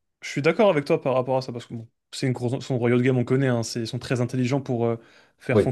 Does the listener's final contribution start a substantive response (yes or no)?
no